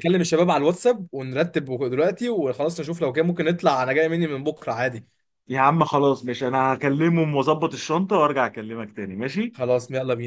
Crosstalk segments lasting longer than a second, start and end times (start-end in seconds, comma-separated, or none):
none